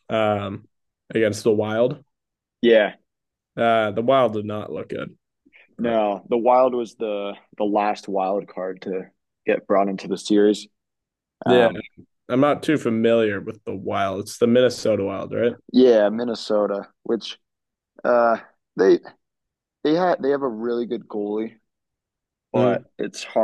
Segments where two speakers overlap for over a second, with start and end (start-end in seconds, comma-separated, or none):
none